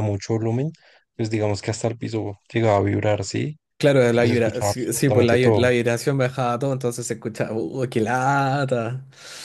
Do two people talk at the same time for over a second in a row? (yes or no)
yes